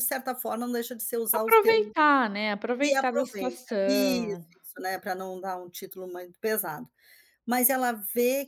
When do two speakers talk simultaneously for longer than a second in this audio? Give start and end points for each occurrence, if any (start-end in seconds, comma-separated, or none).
2.8-4.5